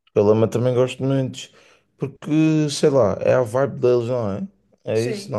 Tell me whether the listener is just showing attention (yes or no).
no